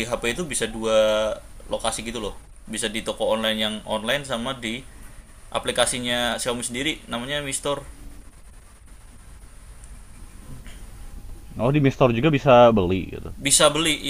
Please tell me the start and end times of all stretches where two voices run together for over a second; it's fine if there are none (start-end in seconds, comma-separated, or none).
none